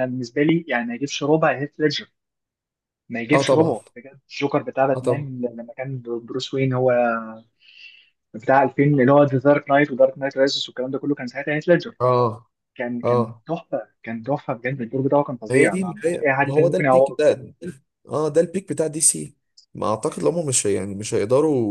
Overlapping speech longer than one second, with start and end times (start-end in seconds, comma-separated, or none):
15.5-17.2